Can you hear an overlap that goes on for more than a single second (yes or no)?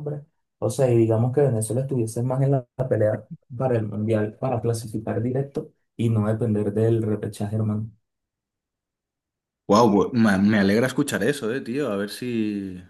no